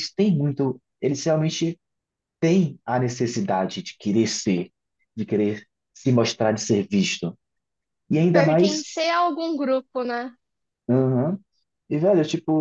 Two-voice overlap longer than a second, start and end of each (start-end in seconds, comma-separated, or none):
none